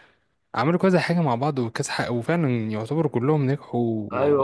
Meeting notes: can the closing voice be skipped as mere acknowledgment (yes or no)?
no